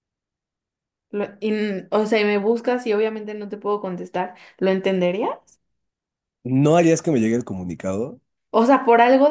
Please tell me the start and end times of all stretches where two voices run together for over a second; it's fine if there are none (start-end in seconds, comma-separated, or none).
none